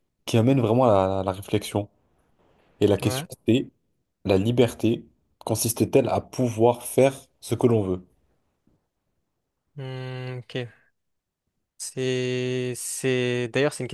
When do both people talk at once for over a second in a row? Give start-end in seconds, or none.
none